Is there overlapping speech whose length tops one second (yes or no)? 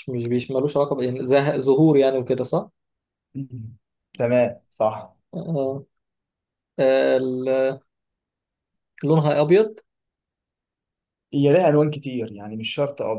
no